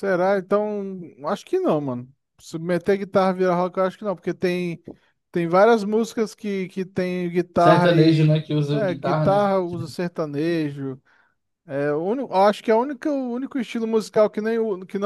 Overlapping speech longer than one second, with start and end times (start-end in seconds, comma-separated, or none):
7.6-9.5